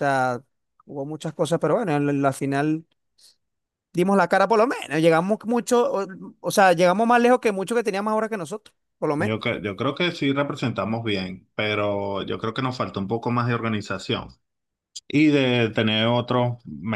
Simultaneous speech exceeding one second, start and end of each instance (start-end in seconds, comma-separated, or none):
none